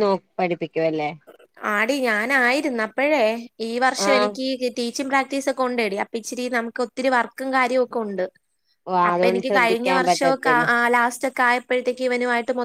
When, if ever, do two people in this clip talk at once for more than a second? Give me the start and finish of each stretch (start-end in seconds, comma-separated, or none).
9.1-10.7